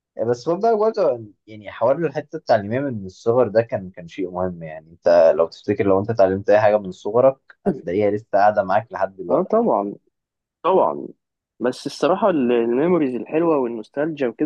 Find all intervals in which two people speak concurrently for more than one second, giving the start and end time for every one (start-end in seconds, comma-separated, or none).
none